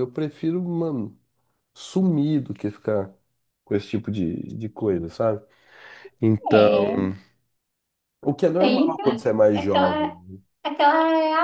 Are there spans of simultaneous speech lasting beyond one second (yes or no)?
yes